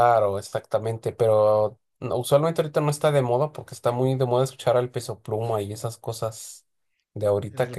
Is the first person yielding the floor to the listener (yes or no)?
yes